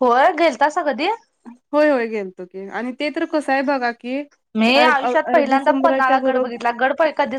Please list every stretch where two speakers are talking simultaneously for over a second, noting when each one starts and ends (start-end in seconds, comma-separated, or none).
4.8-6.6